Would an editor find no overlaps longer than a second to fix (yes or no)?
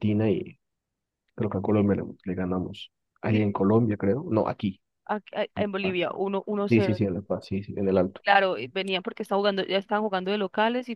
yes